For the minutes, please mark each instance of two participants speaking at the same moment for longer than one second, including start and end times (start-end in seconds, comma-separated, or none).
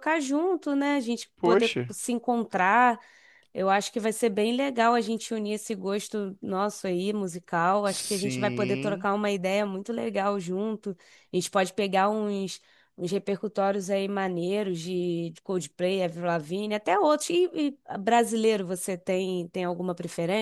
7.8-9.1